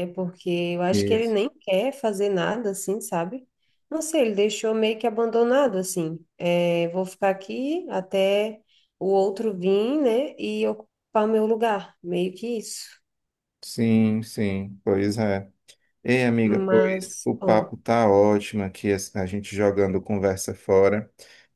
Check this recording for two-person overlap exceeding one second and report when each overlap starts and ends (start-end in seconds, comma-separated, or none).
16.4-17.7